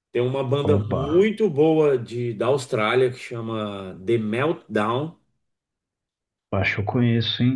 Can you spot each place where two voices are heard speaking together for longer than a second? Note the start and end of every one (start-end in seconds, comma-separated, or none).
none